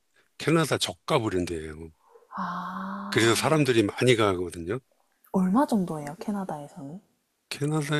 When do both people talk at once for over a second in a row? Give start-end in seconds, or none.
none